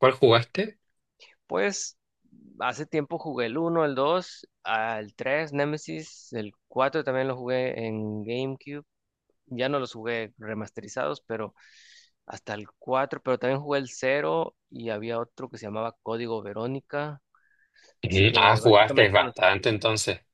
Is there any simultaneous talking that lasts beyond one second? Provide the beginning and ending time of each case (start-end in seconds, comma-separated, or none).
18.0-19.5